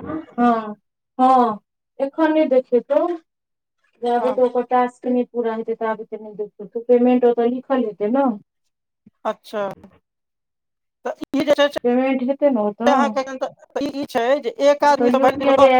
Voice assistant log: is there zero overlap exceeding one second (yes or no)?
no